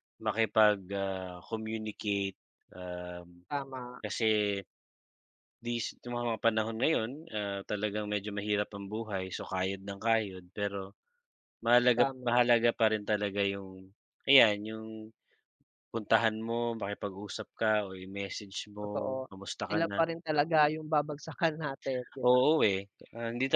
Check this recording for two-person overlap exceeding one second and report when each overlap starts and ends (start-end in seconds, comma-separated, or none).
none